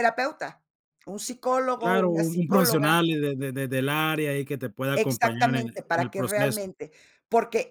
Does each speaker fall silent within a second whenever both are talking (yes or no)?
no